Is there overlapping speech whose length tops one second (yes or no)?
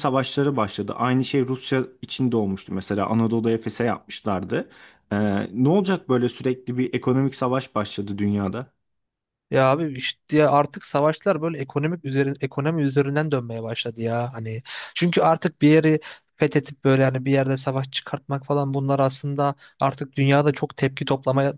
no